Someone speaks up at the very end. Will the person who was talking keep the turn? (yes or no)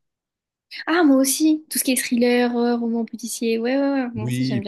no